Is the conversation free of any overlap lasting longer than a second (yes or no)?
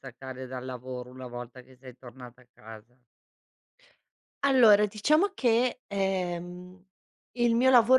yes